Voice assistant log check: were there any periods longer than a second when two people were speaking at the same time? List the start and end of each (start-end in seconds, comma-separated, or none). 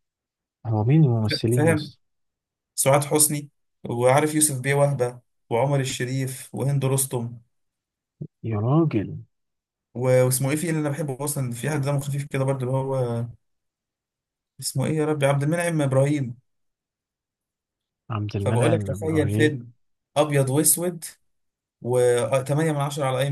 18.4-19.6